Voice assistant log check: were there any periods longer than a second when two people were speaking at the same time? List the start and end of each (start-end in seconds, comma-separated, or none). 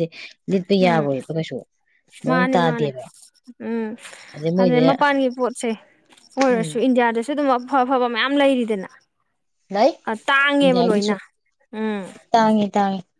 none